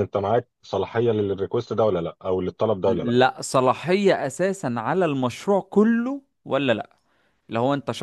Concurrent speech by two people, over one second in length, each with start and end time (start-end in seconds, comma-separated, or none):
none